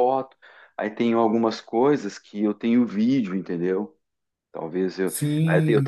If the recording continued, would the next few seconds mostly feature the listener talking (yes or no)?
yes